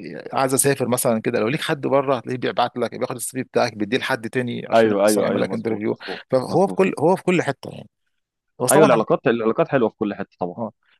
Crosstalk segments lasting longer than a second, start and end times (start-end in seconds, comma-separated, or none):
4.7-6.8